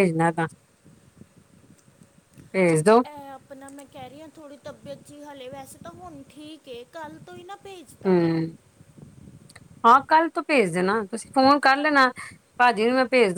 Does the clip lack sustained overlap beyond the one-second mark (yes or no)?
yes